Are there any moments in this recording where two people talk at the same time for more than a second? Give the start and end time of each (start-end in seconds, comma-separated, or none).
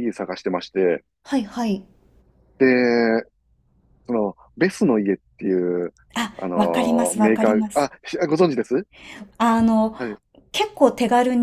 6.4-7.9